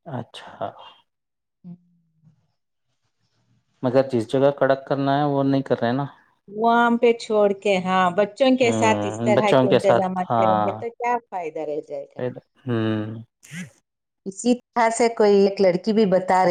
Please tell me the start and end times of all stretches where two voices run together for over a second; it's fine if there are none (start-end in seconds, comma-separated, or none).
8.6-10.7